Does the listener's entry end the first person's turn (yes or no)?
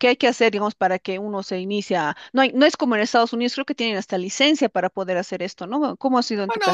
yes